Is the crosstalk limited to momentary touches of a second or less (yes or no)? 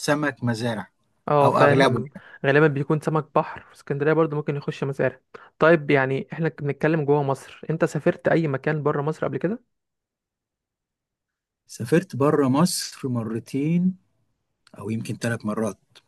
yes